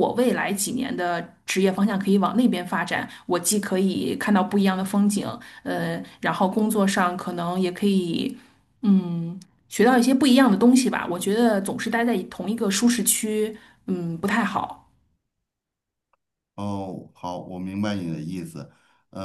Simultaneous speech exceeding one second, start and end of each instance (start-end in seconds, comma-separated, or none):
none